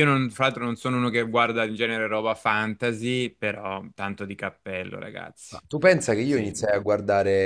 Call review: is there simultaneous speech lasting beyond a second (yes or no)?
no